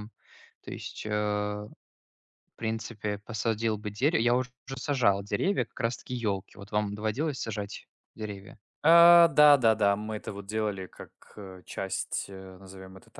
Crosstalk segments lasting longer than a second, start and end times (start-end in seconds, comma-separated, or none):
none